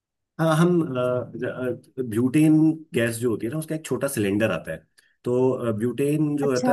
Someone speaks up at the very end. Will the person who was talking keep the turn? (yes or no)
yes